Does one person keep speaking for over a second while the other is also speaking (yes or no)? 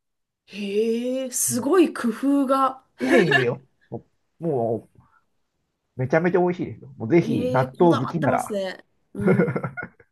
yes